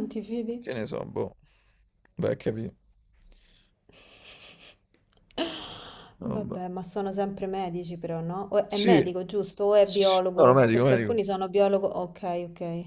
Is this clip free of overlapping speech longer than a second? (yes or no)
no